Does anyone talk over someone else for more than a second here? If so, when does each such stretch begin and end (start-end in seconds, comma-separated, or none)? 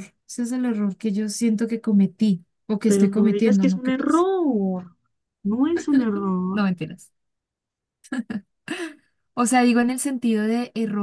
2.9-4.3